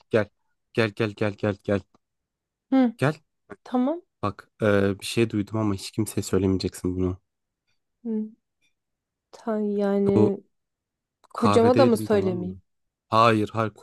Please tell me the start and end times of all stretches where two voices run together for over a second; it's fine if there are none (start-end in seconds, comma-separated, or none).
11.3-12.5